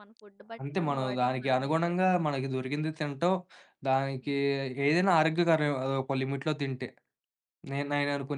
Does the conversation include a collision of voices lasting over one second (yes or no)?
yes